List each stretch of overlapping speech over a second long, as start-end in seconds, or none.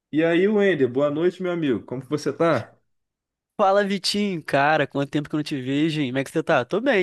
none